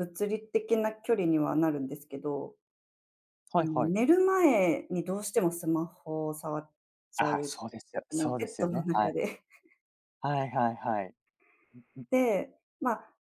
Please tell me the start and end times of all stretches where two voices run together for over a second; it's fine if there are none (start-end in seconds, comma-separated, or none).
7.2-9.1